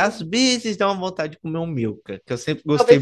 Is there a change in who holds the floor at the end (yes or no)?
yes